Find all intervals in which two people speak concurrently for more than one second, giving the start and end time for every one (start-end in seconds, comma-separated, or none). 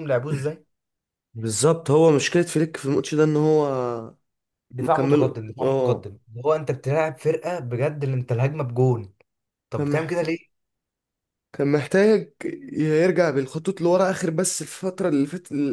4.8-6.1